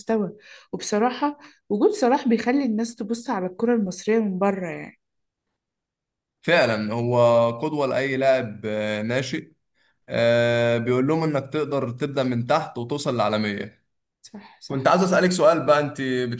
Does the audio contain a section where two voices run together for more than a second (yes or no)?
no